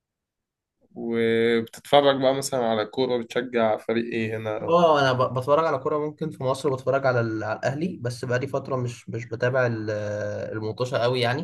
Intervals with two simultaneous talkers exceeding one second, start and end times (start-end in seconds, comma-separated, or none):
none